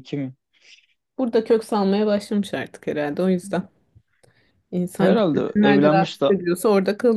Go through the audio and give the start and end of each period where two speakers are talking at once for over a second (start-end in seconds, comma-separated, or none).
5.0-6.3